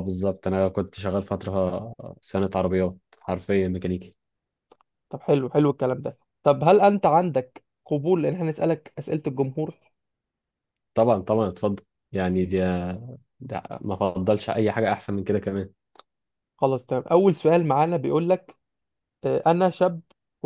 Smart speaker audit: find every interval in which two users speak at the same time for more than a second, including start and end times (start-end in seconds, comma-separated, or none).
none